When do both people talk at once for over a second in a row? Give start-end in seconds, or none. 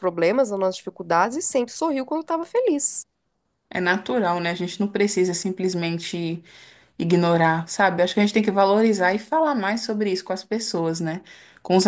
none